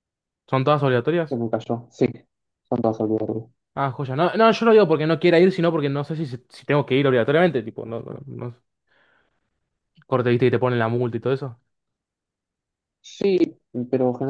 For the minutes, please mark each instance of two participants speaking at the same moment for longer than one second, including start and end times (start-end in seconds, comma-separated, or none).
none